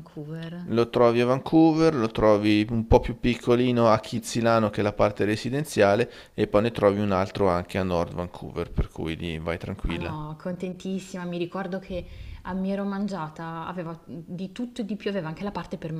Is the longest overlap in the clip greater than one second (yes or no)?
no